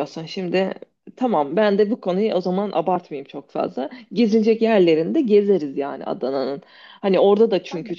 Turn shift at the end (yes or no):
no